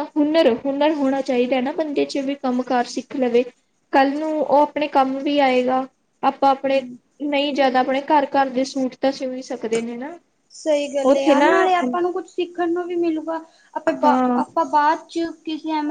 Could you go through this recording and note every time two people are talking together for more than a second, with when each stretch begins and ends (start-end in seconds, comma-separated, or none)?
none